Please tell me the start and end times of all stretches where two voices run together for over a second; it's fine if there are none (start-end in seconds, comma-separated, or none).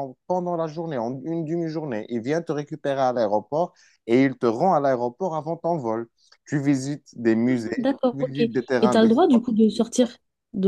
7.5-9.6